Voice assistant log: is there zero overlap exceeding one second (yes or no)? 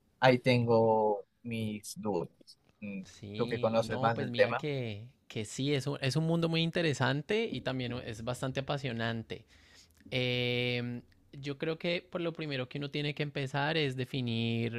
no